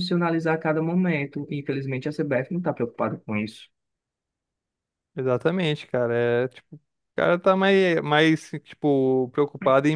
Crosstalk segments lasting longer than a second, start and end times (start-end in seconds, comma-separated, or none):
none